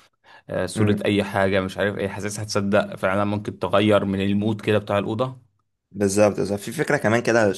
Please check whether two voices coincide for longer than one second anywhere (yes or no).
no